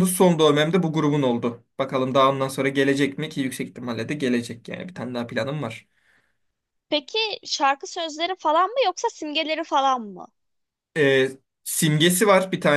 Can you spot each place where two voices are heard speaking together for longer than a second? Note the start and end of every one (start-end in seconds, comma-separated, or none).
none